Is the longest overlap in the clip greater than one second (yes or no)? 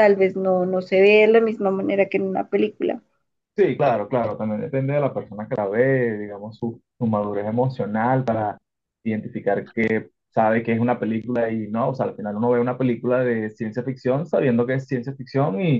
no